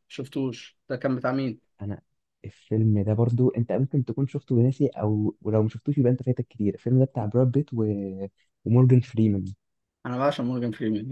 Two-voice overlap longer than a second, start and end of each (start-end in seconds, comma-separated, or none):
none